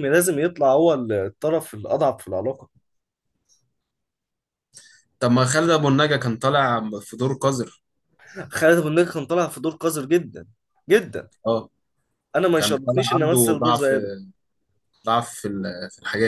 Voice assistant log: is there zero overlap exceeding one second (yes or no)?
no